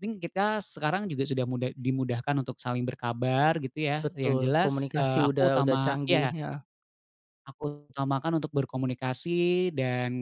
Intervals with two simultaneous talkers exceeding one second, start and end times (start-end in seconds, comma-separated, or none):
4.0-6.3